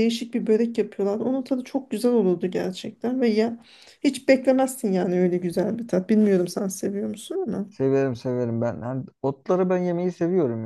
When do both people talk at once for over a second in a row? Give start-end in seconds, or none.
none